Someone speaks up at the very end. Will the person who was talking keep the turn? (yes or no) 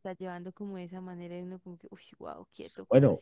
no